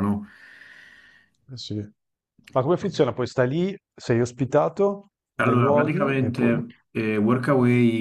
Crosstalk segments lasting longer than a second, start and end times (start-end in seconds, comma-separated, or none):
5.4-6.6